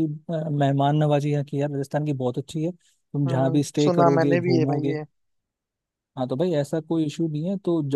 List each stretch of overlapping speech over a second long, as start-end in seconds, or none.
3.3-5.0